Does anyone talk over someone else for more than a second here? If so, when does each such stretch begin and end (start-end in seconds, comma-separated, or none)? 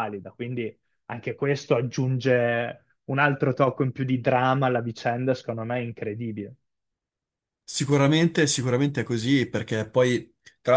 none